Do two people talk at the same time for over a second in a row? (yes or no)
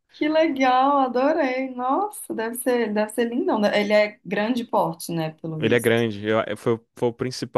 no